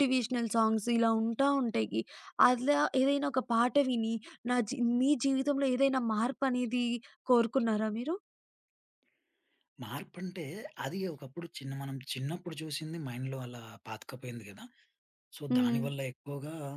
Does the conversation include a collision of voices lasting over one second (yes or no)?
no